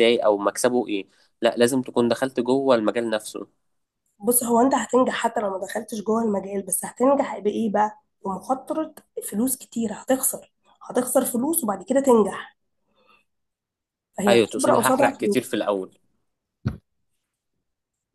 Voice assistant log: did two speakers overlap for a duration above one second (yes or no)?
yes